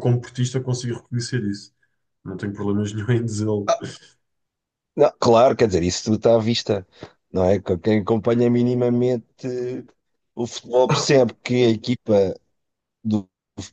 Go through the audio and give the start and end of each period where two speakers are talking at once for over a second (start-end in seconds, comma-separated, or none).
none